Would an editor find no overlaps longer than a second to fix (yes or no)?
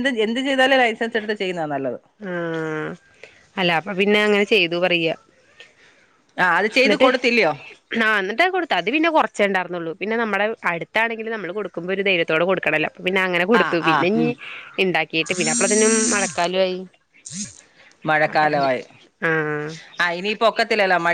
yes